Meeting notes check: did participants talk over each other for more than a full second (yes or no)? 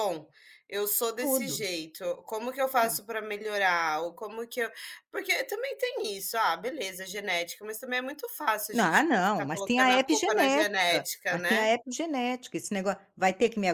yes